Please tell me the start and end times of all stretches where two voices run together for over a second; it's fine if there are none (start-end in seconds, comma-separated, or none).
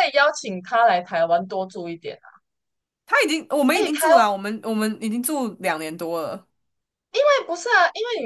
none